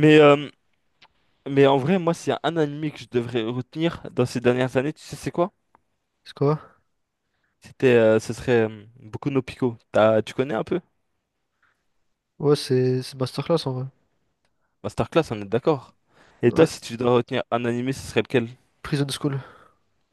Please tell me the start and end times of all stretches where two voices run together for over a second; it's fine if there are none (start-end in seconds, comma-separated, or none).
none